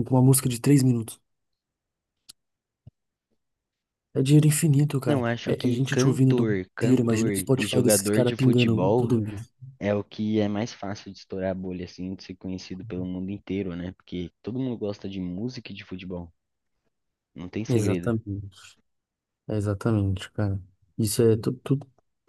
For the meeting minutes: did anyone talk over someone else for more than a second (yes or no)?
yes